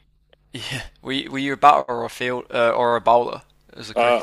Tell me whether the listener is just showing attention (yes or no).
no